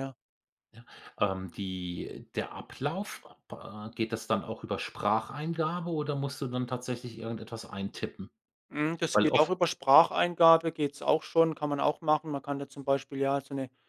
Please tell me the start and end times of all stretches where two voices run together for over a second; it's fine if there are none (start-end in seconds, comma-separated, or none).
none